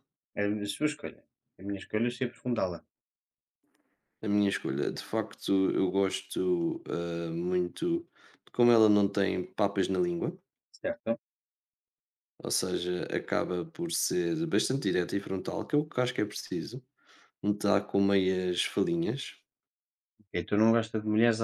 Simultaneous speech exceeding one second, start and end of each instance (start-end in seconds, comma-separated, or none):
none